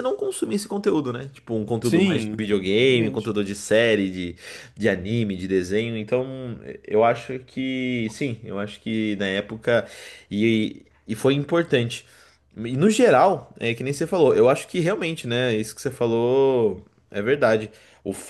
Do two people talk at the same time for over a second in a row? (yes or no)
yes